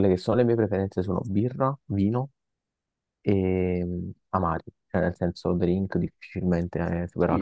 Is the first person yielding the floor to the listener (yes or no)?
yes